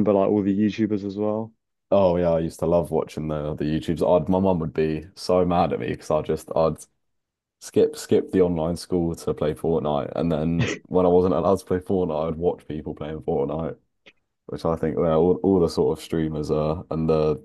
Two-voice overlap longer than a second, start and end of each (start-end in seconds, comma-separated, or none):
none